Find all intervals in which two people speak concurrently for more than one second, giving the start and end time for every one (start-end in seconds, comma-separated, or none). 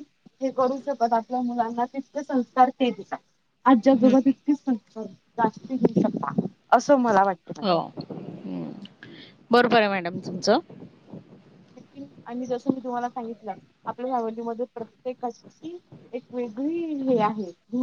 none